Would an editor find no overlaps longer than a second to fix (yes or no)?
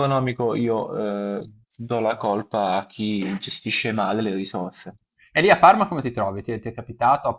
yes